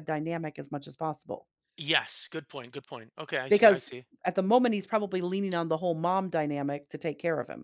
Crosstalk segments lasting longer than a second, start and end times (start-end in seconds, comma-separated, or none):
none